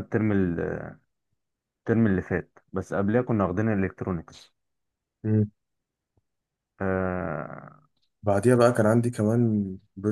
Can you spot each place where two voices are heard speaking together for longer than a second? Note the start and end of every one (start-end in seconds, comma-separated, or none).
none